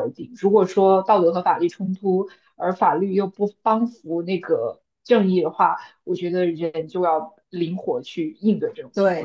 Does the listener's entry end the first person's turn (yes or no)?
yes